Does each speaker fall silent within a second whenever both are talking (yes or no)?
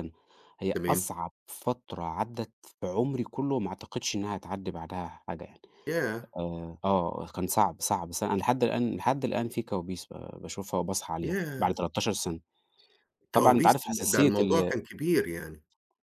no